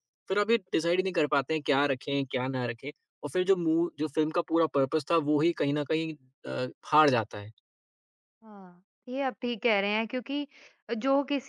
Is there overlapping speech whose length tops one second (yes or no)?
no